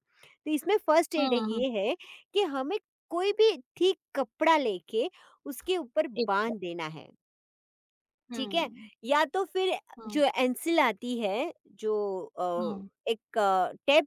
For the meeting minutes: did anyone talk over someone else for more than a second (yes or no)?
no